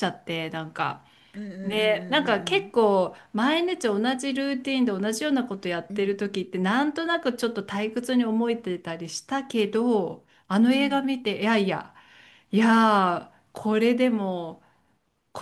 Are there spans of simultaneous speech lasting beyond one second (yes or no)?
yes